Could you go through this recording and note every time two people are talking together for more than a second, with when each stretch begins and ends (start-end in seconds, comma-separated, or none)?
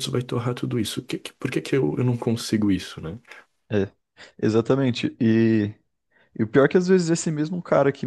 none